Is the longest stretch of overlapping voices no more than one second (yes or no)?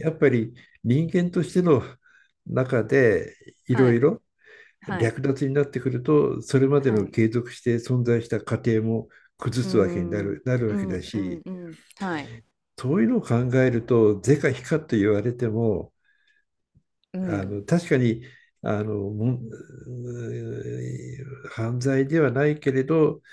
no